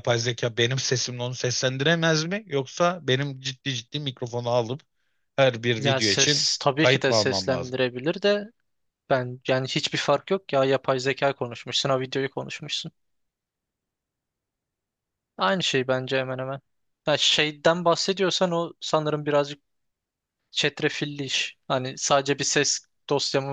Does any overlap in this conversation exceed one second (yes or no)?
yes